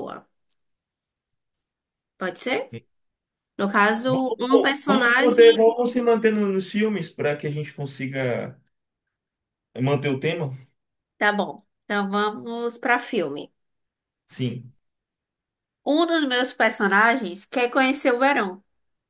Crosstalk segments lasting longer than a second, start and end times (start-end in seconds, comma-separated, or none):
4.1-5.6